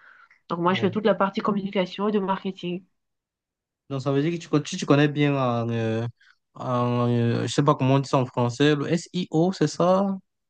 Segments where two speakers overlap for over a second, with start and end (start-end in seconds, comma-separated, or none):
none